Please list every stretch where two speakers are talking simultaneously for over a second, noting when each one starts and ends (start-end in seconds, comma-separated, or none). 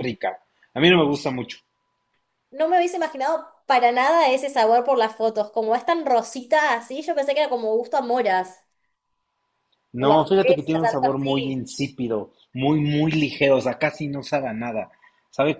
10.0-11.4